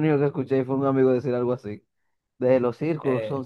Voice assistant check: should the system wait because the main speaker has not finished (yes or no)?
yes